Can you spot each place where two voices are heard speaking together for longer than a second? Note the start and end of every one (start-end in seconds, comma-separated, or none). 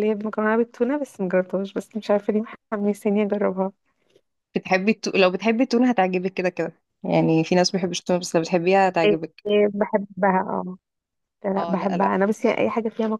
none